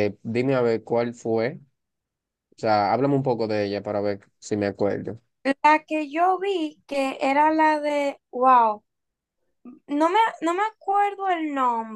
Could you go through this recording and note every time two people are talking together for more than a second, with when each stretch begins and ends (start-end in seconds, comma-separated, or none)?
none